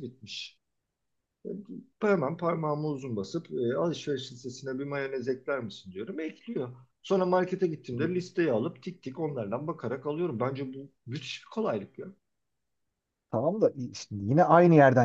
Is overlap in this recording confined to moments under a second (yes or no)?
yes